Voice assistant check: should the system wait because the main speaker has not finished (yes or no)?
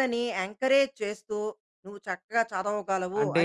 no